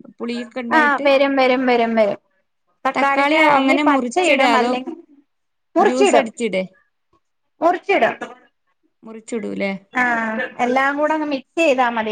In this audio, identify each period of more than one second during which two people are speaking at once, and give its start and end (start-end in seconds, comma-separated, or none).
3.0-4.7